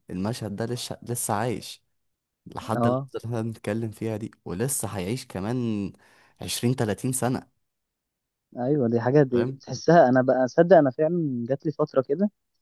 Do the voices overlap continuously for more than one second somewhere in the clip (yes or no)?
no